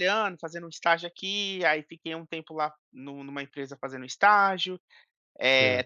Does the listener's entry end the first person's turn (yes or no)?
no